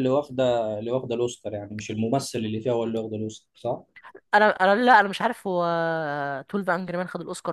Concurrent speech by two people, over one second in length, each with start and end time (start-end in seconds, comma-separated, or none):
none